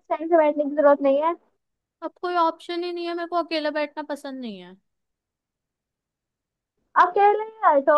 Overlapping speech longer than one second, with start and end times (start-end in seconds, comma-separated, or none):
none